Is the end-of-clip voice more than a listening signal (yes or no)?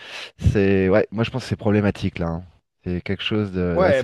yes